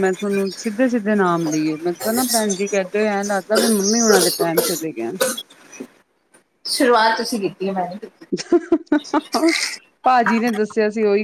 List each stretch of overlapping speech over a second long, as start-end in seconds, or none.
none